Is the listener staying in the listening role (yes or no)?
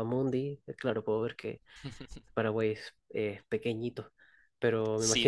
no